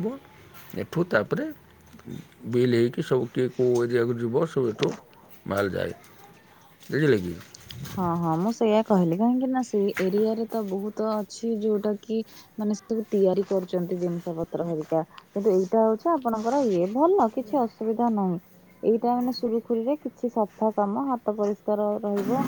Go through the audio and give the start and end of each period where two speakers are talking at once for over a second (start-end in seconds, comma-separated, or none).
none